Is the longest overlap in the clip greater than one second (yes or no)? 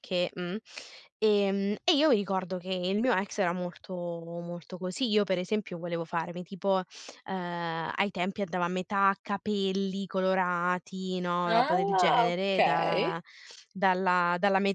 yes